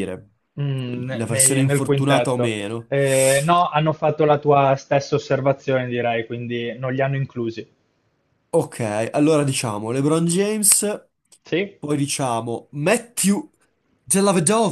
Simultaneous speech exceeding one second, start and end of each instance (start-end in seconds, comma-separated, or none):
1.1-2.9